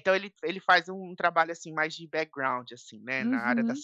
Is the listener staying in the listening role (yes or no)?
yes